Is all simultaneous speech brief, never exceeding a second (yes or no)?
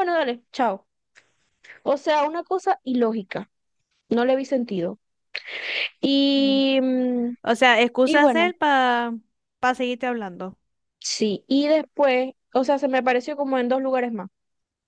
yes